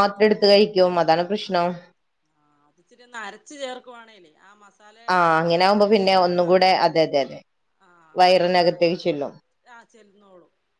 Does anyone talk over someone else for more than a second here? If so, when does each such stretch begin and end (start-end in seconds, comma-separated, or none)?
5.1-6.9